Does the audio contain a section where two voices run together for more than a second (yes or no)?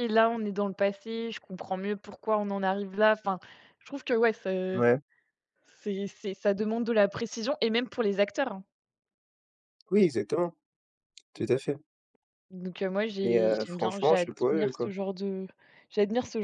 yes